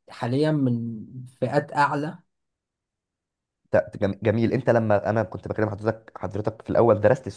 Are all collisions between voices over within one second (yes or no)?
yes